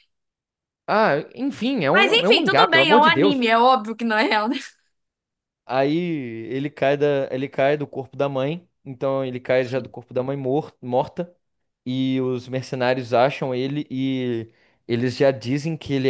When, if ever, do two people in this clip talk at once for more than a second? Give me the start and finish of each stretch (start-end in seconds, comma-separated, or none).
1.9-3.5